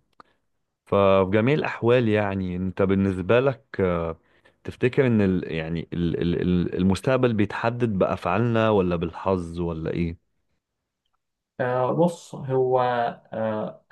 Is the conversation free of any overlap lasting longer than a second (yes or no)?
yes